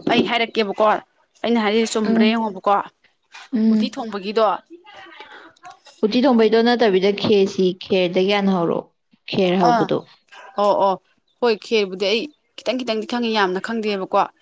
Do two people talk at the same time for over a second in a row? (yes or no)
no